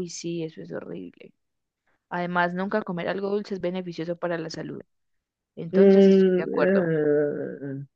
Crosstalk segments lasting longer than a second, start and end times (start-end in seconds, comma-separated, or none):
5.7-6.9